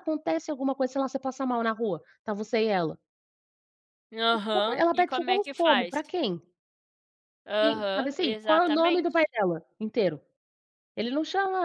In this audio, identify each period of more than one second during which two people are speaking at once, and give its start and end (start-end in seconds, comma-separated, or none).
4.5-6.0, 7.6-9.2